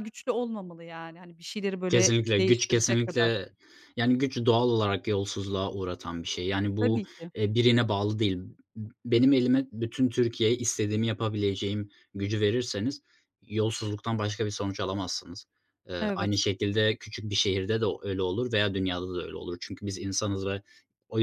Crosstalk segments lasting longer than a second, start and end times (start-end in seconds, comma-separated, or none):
1.9-3.4